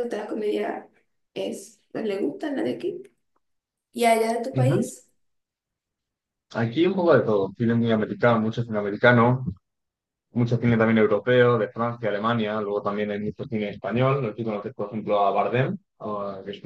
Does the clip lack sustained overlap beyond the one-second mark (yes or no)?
yes